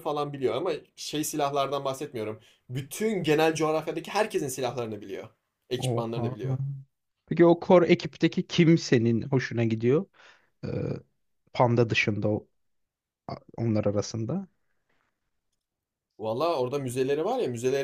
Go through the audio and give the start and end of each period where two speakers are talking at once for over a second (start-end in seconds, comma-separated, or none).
none